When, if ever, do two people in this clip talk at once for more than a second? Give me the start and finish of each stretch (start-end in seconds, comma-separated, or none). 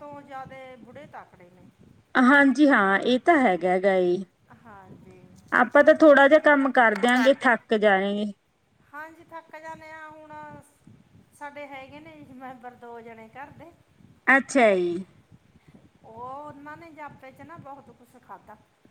none